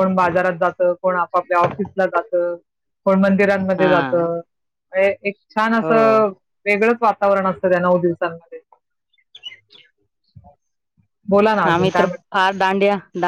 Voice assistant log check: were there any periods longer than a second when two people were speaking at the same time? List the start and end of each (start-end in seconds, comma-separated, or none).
none